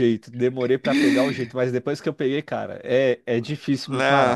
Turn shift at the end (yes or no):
yes